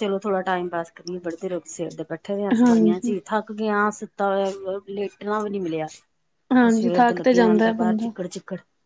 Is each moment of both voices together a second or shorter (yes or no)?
no